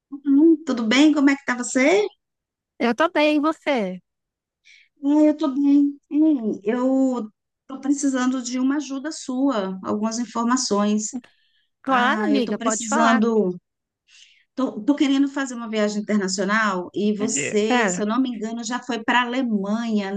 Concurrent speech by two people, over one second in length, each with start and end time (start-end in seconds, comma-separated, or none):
11.9-13.2